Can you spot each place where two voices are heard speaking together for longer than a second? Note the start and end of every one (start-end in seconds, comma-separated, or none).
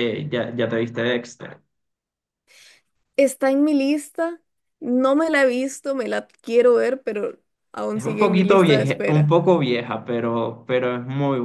7.9-9.3